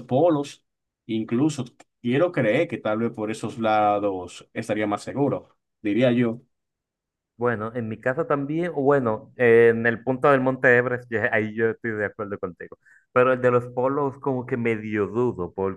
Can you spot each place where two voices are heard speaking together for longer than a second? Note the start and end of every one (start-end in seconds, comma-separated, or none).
none